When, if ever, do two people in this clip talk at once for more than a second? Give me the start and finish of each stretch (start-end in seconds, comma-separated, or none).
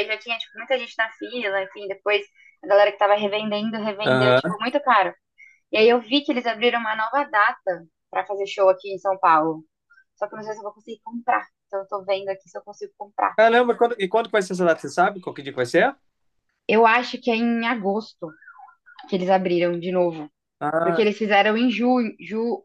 none